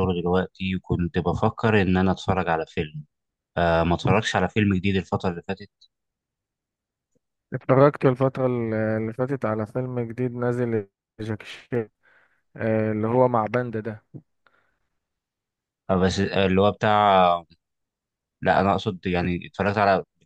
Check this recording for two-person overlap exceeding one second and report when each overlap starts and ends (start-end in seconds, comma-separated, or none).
none